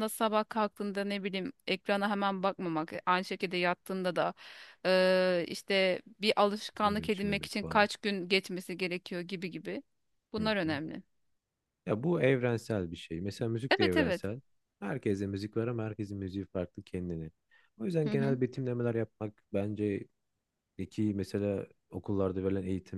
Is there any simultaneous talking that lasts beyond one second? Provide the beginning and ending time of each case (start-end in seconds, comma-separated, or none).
6.5-7.9